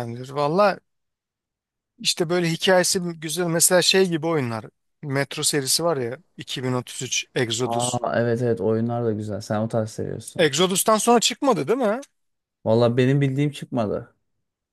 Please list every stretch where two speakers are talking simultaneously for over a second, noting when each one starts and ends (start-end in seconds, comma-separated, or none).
none